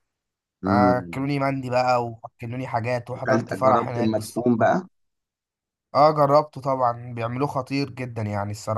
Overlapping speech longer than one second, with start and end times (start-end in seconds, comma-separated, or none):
3.2-4.6